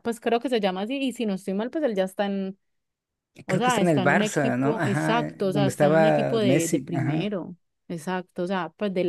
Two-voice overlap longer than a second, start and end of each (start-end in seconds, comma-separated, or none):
3.5-7.3